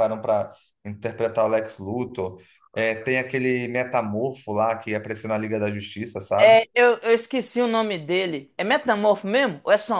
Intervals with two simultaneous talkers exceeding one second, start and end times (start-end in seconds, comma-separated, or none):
none